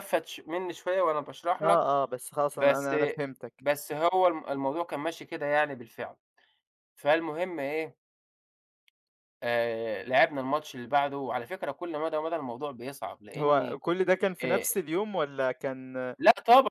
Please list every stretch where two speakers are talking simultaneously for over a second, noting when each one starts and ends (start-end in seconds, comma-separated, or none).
none